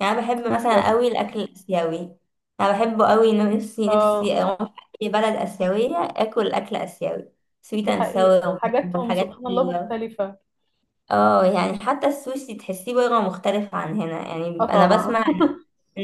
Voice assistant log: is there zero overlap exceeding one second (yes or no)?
no